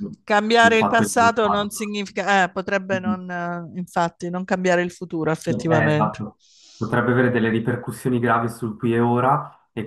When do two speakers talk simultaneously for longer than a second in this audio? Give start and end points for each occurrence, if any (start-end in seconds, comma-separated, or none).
0.6-1.9